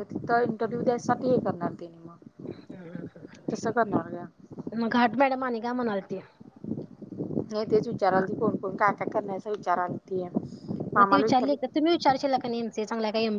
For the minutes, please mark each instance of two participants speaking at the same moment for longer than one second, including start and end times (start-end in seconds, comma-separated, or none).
none